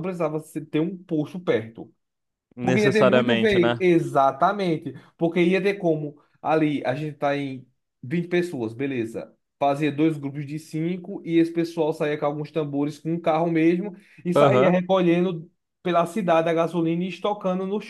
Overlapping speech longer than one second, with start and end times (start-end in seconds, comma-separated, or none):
2.6-3.8